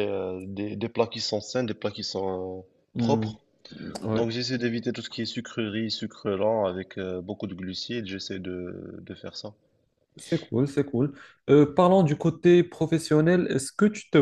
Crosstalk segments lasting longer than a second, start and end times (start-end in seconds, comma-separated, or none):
none